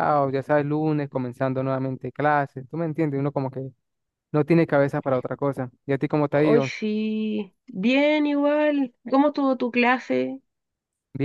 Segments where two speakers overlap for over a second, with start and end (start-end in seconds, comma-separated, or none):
none